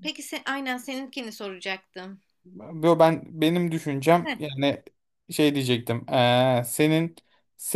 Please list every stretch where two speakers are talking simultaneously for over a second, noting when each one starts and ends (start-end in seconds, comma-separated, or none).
none